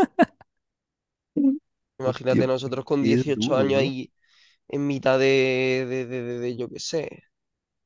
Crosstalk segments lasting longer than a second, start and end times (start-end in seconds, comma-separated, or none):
2.0-4.0